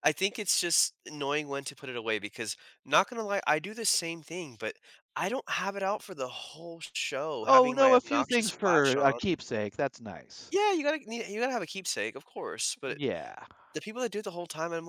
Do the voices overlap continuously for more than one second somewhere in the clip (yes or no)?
yes